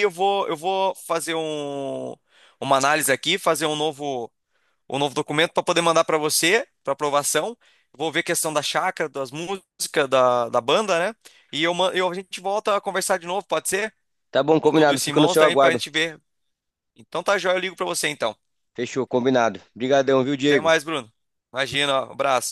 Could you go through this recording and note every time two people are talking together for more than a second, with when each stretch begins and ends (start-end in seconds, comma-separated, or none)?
14.6-15.8